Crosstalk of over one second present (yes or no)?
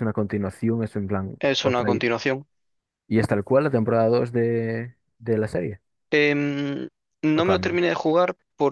no